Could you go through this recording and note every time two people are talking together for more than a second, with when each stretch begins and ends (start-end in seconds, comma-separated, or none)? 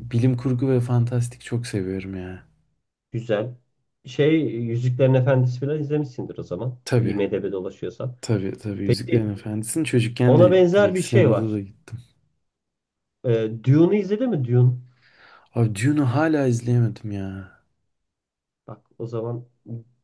10.2-11.6